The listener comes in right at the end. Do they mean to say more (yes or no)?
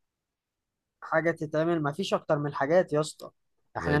no